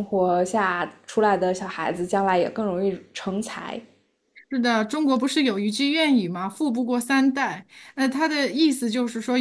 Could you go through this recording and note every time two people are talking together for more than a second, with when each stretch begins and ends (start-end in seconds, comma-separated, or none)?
none